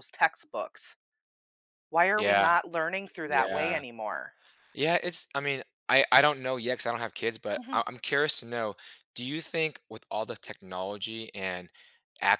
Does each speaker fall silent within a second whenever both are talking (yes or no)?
yes